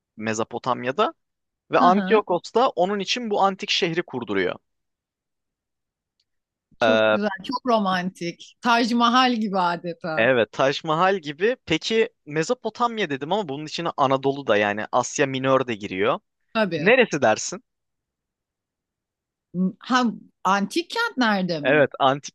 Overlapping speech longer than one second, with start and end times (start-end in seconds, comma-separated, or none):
none